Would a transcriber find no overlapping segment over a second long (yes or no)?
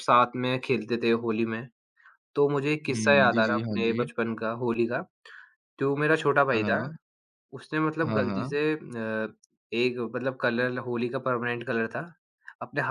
no